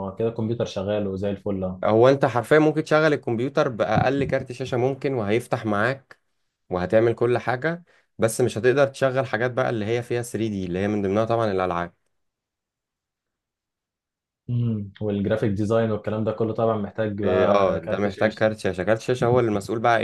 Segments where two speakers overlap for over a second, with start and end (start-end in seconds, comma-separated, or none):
17.2-18.4